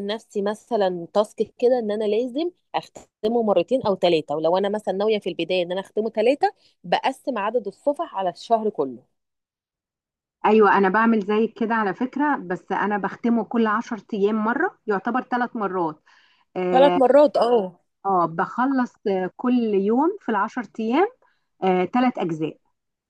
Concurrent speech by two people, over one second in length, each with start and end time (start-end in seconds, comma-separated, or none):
none